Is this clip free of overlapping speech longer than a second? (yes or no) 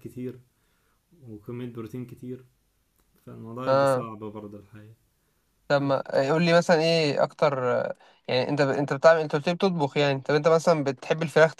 yes